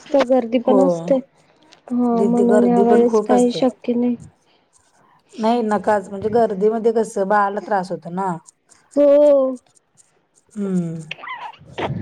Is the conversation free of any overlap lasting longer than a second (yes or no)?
no